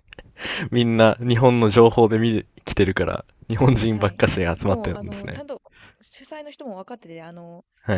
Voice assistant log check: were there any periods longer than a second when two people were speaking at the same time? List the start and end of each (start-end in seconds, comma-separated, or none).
3.9-5.4